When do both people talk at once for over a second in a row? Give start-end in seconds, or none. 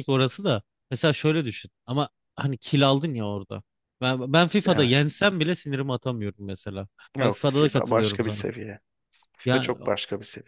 7.2-8.5